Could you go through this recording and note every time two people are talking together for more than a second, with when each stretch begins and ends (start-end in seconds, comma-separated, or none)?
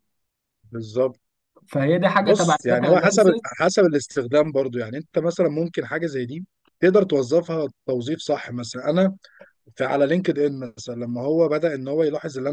2.2-3.6